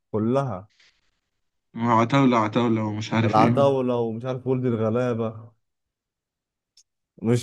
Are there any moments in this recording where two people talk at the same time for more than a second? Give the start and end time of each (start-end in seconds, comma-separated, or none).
none